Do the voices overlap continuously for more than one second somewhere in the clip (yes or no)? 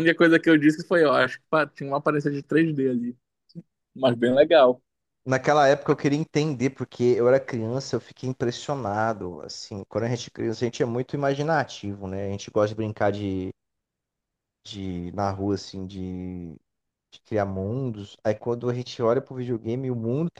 no